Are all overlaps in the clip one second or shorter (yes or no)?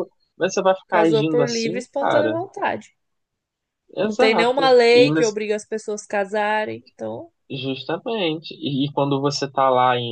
no